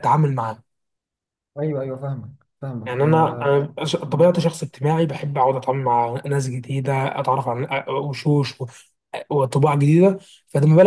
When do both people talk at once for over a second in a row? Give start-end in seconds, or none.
none